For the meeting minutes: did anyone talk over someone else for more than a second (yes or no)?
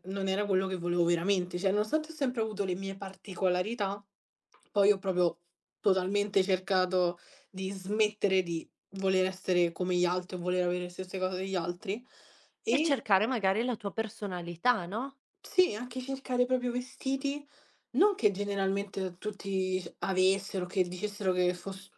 no